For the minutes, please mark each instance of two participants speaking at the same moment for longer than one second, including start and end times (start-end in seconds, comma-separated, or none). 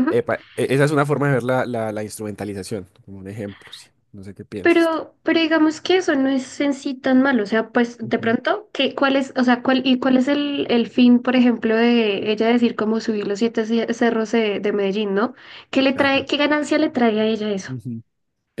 none